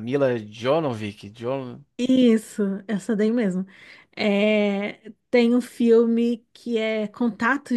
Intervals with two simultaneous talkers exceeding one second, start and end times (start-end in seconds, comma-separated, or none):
none